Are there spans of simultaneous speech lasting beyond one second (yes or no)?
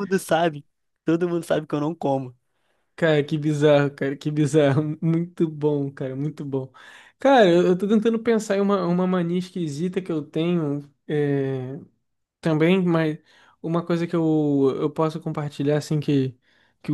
no